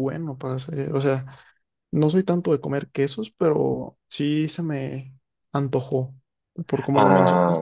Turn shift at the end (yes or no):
yes